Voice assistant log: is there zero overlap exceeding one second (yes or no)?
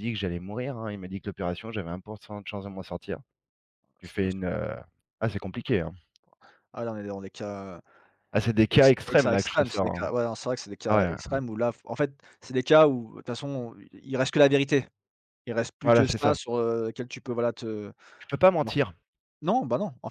no